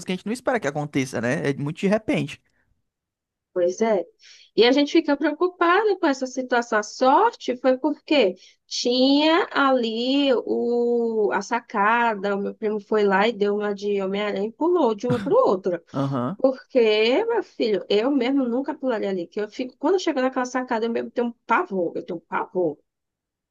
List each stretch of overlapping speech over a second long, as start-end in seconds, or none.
none